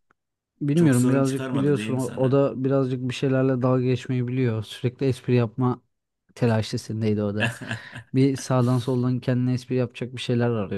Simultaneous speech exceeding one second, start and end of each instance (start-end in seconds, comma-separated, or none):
0.7-2.4